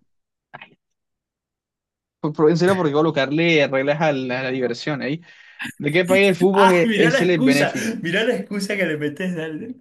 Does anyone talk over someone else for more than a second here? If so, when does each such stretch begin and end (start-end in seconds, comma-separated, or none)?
6.5-7.9